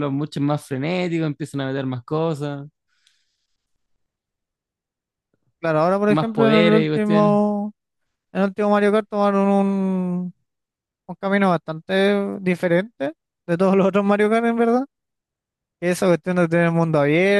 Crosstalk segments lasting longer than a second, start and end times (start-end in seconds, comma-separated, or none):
6.1-7.4